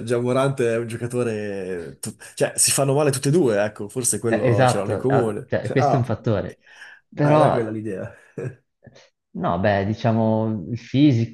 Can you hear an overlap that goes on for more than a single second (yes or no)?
yes